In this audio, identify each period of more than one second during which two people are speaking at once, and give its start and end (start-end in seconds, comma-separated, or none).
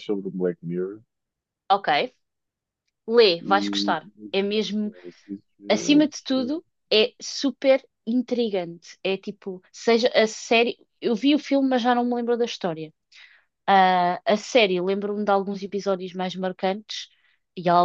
none